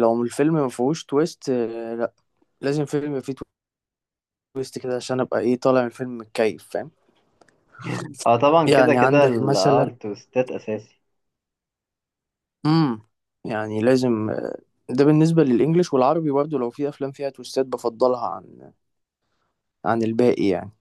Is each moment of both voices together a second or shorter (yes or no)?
no